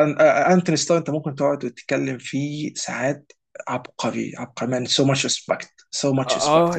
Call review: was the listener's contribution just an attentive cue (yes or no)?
no